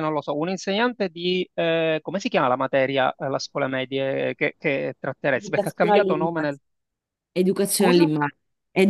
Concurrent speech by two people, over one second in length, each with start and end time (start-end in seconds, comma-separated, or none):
5.3-6.6